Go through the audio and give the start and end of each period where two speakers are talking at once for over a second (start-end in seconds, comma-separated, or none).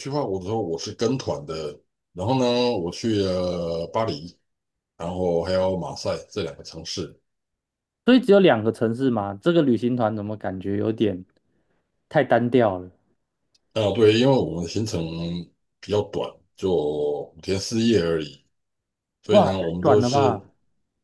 19.3-20.5